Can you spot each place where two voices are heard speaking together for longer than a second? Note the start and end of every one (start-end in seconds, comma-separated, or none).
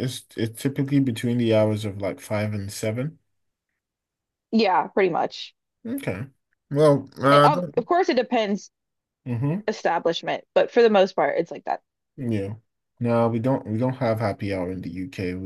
none